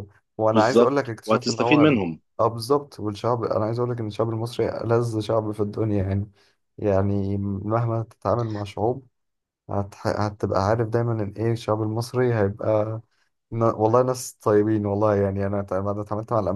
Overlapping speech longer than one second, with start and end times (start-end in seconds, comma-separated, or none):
0.5-2.0